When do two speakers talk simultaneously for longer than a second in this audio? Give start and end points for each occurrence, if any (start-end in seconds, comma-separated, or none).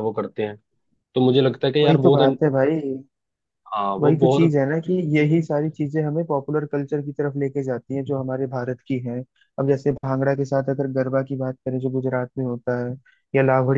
none